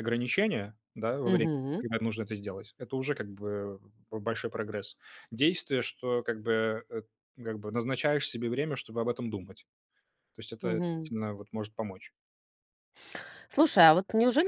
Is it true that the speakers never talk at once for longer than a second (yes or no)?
yes